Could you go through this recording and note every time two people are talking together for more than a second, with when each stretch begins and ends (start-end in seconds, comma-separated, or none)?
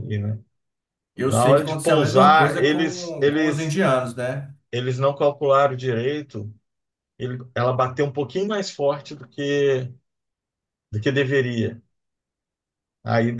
1.3-3.9